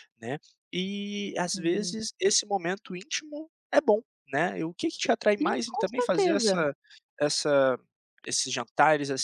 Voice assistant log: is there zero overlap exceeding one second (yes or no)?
no